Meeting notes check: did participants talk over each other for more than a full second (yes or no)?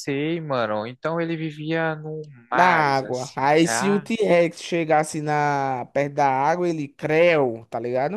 yes